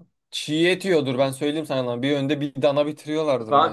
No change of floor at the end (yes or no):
no